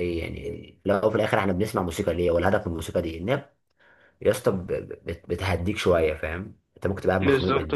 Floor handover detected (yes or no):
yes